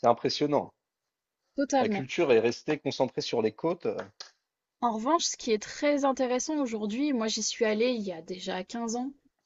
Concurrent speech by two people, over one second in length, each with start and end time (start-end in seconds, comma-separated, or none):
none